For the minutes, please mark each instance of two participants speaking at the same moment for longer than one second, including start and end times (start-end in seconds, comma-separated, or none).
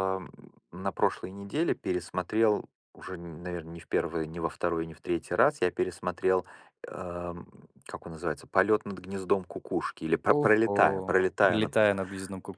10.3-12.0